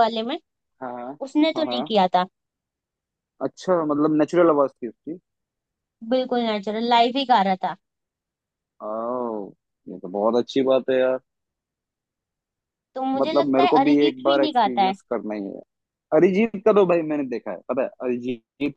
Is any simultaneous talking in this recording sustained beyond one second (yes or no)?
yes